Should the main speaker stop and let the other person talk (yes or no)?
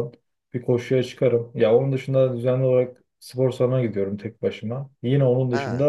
no